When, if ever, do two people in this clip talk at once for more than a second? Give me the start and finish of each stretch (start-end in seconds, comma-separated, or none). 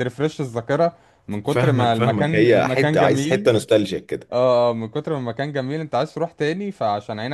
1.5-3.5